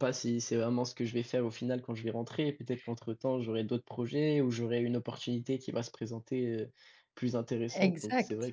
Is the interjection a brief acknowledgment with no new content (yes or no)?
no